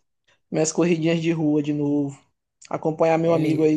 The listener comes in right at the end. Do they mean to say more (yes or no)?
no